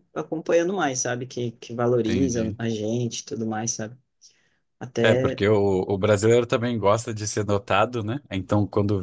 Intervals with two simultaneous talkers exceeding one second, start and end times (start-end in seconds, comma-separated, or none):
none